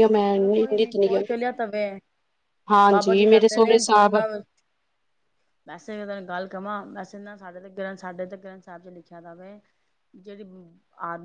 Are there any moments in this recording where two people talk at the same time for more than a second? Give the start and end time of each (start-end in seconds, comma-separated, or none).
2.9-4.2